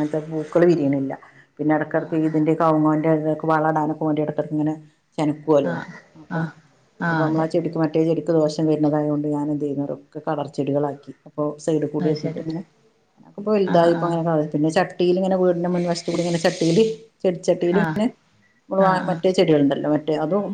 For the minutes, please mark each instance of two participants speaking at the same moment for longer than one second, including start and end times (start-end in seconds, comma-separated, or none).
none